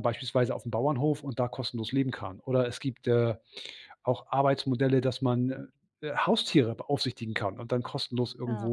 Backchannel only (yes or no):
yes